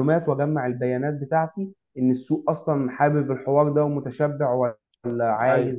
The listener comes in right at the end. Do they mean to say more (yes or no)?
no